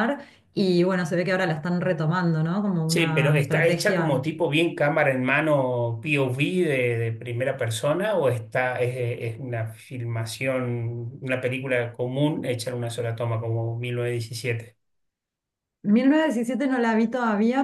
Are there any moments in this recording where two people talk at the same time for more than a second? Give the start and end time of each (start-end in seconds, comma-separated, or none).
2.9-4.3